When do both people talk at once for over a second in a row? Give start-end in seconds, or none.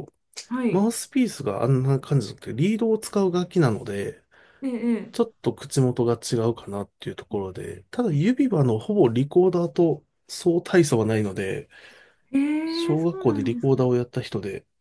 12.7-13.9